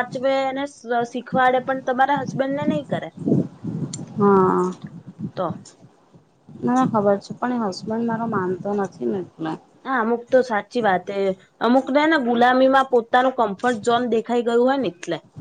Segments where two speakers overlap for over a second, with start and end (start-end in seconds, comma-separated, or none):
none